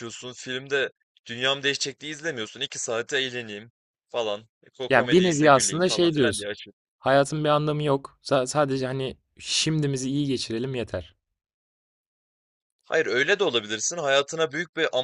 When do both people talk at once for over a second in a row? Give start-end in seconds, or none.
4.9-6.5